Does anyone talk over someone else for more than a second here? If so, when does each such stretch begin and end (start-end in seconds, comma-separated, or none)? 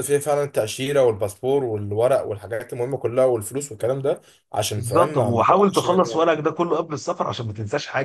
4.8-6.2